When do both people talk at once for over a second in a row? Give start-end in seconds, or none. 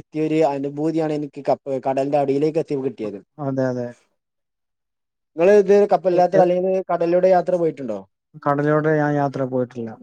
none